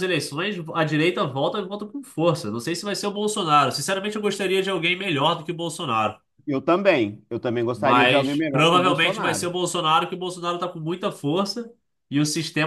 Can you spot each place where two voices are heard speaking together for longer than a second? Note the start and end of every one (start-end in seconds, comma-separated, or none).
7.7-9.5